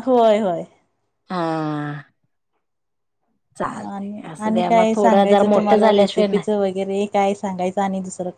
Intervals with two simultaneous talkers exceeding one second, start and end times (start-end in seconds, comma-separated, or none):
3.9-6.4